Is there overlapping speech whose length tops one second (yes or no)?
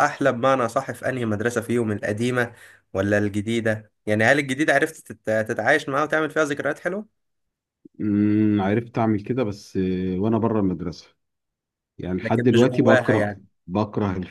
yes